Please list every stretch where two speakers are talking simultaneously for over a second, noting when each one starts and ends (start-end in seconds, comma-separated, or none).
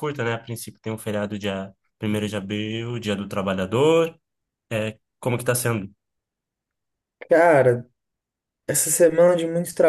none